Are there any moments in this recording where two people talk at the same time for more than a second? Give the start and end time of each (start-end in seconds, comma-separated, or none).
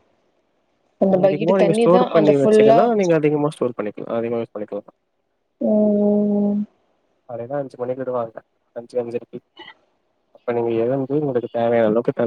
1.1-2.8